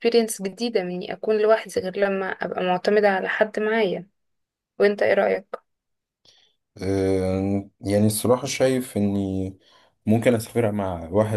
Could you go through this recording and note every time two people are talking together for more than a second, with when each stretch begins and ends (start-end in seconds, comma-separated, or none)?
none